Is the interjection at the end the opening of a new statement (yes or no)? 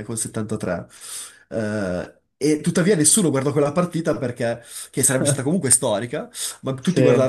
no